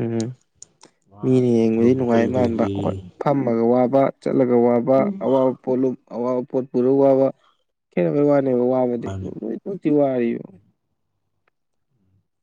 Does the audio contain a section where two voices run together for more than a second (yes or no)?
yes